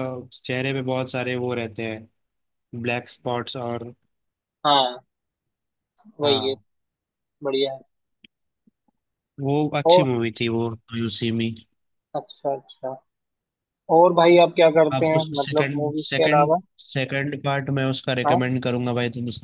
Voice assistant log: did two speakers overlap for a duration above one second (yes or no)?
yes